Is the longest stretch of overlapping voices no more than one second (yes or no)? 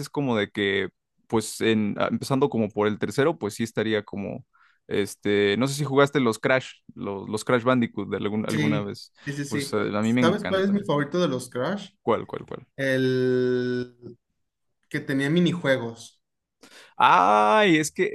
no